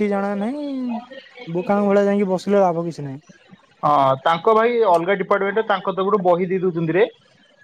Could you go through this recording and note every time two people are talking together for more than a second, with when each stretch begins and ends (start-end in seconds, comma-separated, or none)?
none